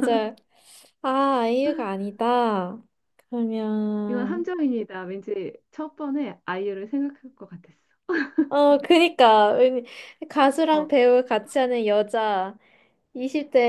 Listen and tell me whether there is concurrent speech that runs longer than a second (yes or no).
no